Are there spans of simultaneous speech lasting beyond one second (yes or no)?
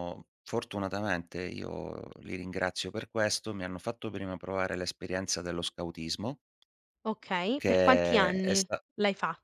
yes